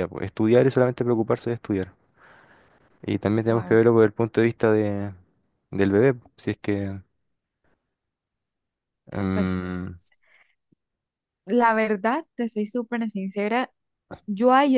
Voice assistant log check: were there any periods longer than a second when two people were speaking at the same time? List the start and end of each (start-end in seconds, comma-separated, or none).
none